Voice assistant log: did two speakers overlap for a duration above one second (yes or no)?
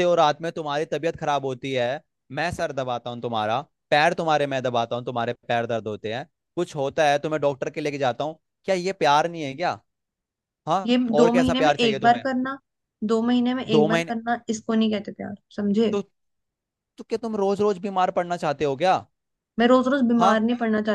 yes